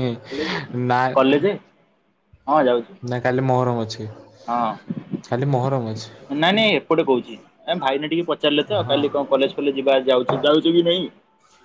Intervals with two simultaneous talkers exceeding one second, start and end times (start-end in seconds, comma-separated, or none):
none